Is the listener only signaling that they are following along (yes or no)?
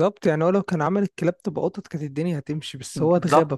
no